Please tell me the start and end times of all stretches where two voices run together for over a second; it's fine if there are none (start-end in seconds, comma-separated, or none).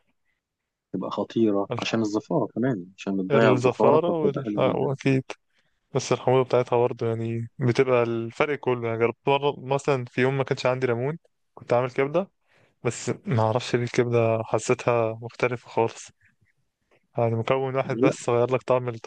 3.3-4.9